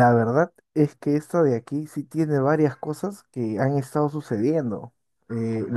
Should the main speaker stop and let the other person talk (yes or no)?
no